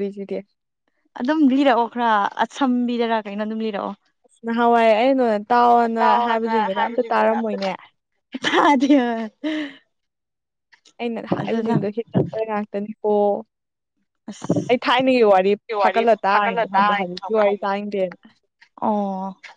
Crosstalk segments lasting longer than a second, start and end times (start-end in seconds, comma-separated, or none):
6.0-7.7, 15.8-17.4